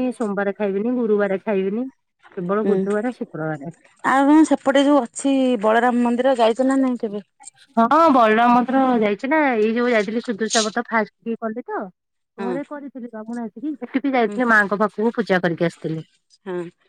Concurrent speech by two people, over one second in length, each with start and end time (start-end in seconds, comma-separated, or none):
none